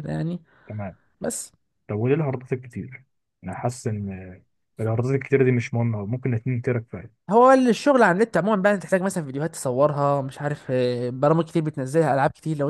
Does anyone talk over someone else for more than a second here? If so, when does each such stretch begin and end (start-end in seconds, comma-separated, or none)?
none